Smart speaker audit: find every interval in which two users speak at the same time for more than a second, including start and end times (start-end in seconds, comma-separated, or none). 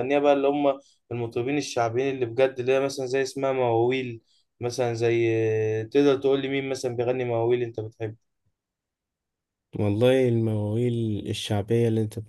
none